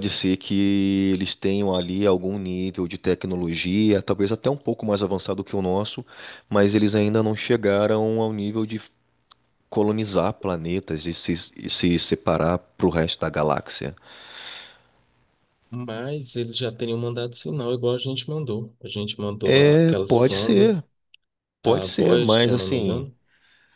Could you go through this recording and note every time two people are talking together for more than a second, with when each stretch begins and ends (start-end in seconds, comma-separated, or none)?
19.4-20.7, 21.6-23.1